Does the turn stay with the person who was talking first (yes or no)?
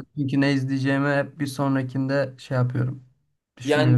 no